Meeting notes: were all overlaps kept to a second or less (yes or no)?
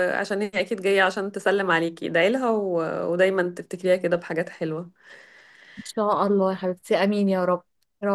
yes